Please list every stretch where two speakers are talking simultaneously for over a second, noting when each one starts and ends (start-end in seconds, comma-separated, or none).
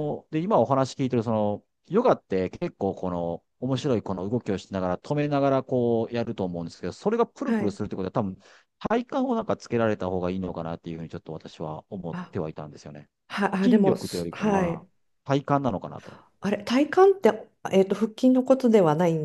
13.6-14.9